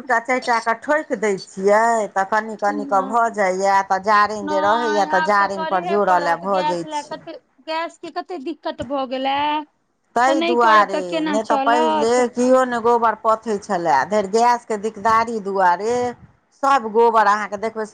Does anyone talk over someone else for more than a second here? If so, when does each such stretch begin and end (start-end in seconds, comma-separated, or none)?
4.5-7.2, 10.3-12.2